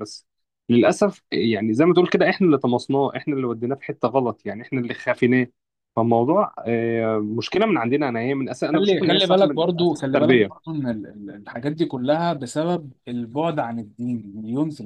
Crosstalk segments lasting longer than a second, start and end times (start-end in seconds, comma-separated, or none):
8.7-10.5